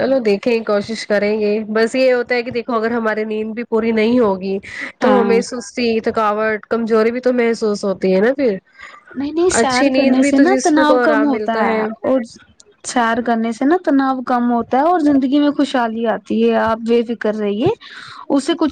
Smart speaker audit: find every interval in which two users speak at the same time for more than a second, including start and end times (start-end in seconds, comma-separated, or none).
9.6-11.6